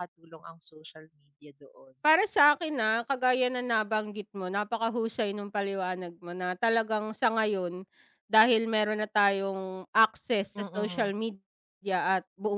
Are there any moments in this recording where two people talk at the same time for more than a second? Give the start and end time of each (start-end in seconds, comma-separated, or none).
none